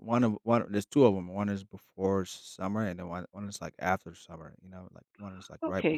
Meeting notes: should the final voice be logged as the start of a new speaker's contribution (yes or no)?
yes